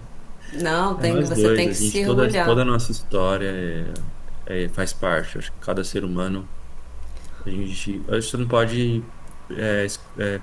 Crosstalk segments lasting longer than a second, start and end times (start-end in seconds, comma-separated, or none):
0.9-2.6